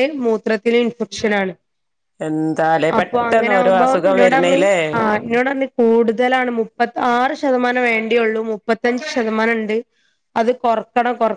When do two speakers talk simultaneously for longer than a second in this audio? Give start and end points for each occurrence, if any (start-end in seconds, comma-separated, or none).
3.0-4.6